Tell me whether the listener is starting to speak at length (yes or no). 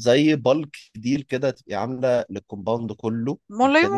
yes